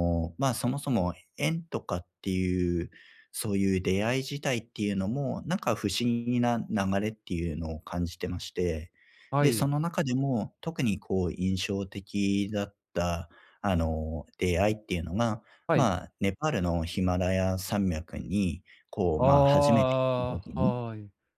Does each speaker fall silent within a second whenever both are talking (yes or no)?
no